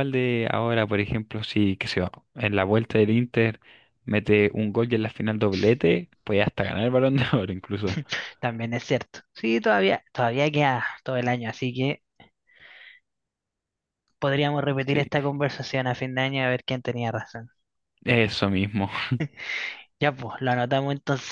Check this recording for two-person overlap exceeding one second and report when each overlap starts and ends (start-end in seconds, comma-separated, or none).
none